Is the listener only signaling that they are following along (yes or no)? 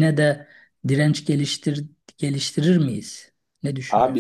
no